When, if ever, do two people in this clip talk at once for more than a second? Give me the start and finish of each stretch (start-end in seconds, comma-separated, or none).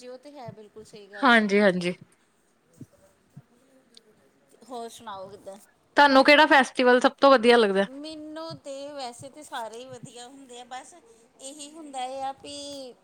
none